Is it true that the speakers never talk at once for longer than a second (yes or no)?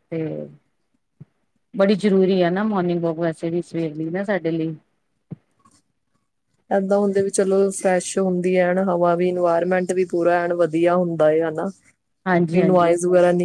yes